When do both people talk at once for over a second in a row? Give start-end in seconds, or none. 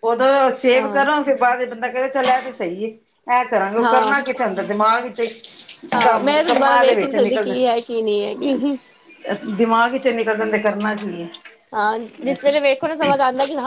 5.9-7.5